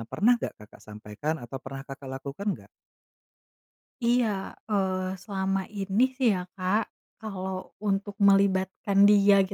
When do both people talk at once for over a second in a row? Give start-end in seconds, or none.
none